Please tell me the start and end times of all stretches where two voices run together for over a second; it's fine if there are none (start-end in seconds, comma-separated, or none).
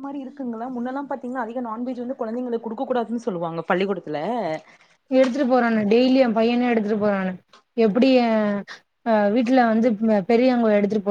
none